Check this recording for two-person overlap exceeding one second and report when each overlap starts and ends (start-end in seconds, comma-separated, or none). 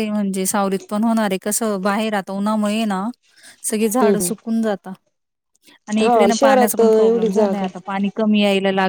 6.0-7.7